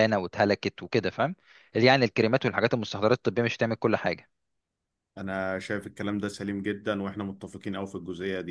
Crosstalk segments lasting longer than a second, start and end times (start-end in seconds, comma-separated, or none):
none